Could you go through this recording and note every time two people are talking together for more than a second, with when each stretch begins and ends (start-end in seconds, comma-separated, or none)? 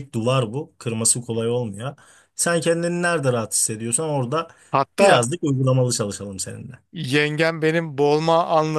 none